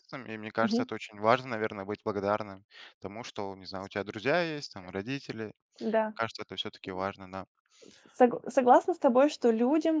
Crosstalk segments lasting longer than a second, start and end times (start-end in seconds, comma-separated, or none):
none